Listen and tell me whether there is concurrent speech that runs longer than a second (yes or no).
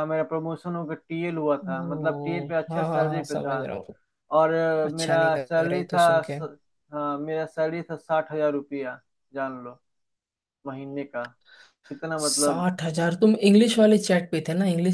yes